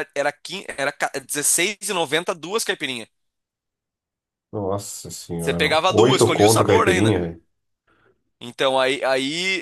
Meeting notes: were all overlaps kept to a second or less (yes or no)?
no